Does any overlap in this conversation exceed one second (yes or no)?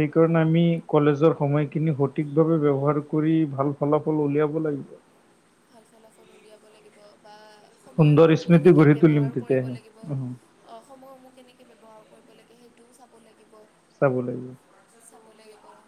yes